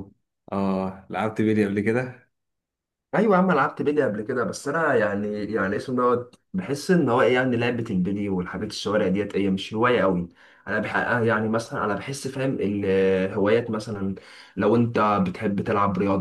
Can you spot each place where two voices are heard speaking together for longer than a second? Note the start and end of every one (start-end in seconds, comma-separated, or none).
none